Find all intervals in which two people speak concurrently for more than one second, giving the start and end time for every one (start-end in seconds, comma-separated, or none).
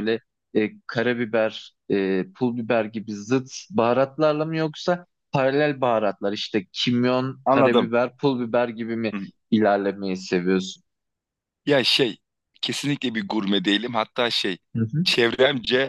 none